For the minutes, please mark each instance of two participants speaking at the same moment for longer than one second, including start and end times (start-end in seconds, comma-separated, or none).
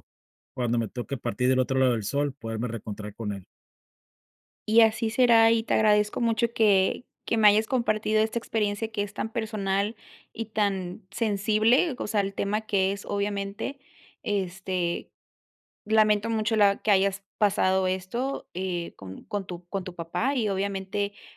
none